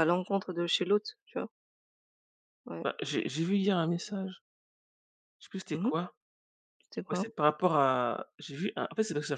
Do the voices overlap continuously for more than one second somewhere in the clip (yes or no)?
no